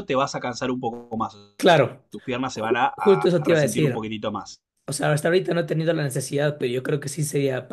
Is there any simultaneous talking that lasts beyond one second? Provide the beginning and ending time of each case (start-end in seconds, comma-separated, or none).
2.5-4.0